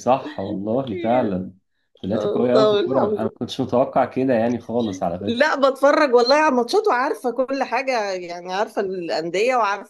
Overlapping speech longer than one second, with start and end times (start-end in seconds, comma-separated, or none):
2.1-3.4